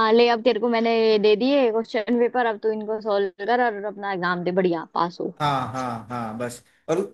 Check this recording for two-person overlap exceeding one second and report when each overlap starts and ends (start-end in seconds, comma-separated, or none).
none